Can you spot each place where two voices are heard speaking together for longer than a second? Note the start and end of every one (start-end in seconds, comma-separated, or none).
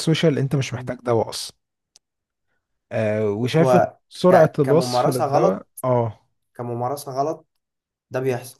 3.6-5.7